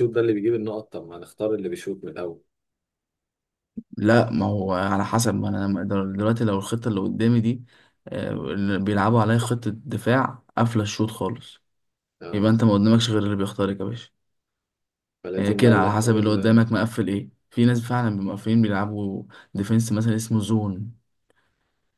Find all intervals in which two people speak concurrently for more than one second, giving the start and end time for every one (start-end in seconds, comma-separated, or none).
15.4-16.6